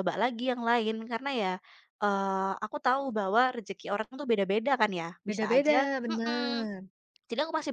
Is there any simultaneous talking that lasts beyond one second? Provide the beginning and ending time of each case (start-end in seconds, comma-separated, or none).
5.3-6.6